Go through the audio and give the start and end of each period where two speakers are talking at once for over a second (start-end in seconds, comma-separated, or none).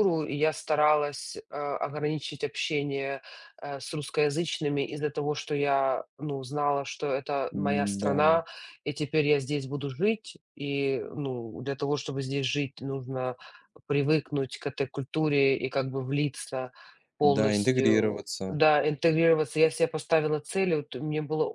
17.2-18.6